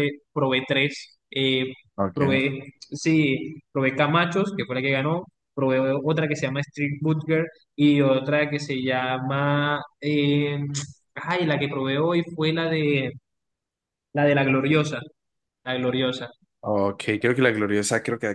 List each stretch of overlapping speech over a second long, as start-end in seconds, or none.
none